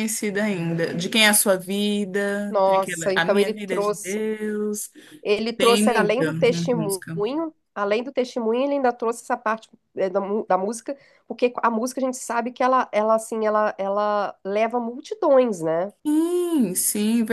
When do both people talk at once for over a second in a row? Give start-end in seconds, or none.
2.5-4.2, 5.6-7.2